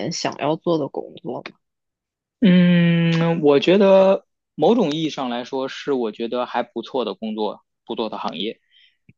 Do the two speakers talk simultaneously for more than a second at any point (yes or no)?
no